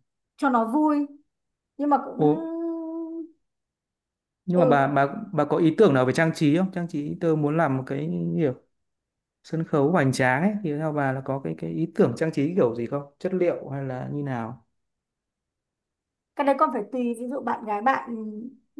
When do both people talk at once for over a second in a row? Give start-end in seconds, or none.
none